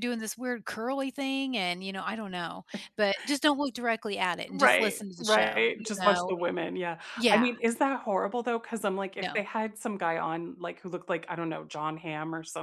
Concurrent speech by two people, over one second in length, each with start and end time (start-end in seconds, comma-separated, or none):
4.5-6.3